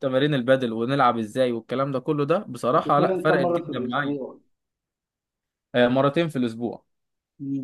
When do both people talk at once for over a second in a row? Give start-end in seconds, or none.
2.8-4.2